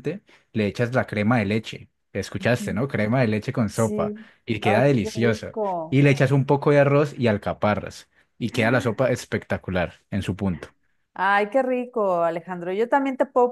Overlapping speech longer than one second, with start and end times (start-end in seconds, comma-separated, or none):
3.7-6.0